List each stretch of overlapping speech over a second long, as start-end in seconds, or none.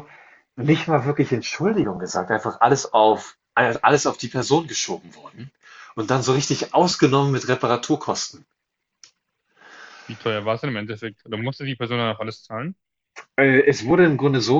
none